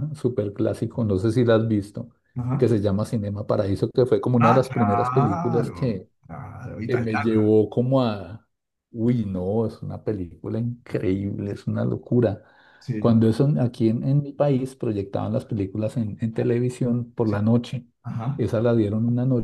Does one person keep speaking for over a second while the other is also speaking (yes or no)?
yes